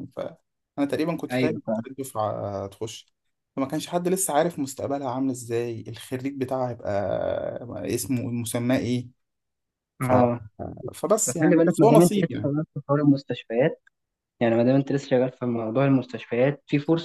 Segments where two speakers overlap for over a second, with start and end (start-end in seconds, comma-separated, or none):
11.2-12.5